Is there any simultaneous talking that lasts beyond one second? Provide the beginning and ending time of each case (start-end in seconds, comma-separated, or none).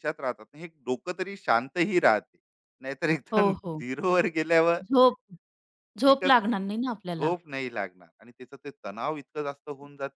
6.0-7.3